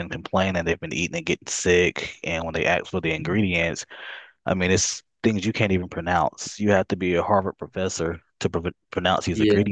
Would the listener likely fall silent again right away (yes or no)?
yes